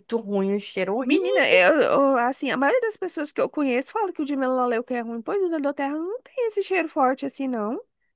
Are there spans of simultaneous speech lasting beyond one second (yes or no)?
no